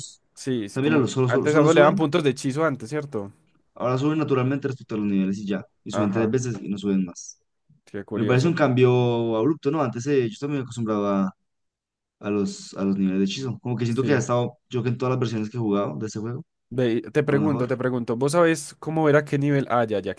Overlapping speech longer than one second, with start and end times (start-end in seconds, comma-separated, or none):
0.7-2.0